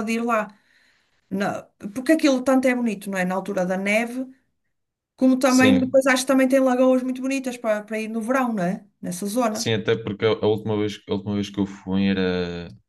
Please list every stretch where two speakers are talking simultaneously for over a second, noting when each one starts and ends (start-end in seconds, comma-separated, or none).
none